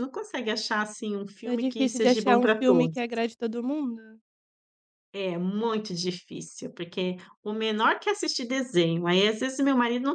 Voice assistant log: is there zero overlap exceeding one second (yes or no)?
no